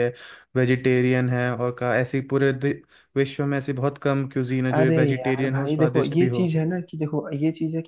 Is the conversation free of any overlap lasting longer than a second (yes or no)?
no